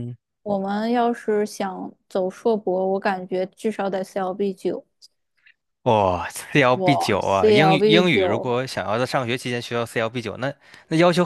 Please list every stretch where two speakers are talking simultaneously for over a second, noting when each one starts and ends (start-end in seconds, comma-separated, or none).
6.7-8.5